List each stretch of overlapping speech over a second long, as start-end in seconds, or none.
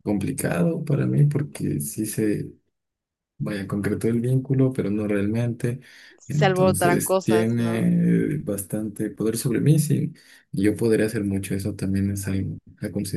6.3-7.8